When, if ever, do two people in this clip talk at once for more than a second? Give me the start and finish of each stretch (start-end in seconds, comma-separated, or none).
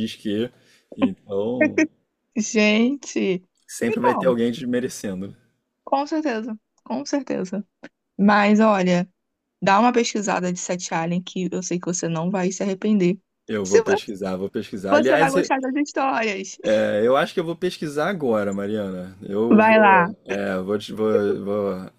none